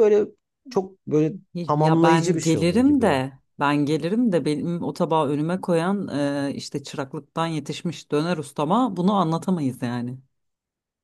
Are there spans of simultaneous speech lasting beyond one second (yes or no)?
yes